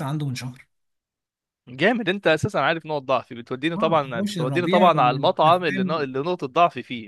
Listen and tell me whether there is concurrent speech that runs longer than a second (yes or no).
yes